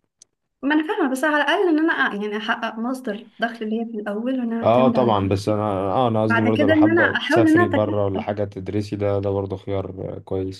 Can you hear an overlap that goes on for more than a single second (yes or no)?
yes